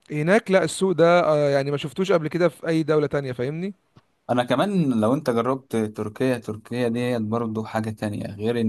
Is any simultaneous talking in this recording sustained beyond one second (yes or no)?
no